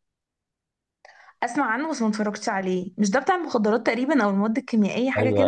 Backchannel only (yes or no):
no